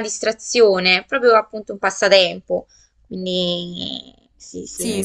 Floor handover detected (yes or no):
yes